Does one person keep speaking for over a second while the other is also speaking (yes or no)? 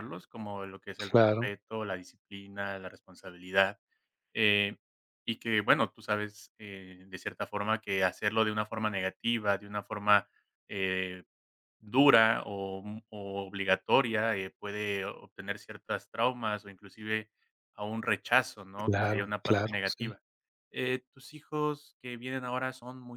yes